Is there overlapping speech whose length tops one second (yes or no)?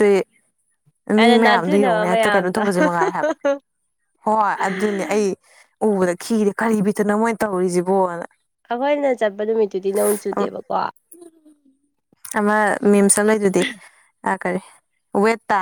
yes